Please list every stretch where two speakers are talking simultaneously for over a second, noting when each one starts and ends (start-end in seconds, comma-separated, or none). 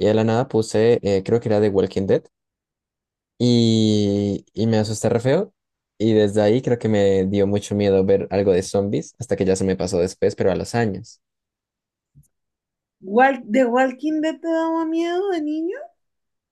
none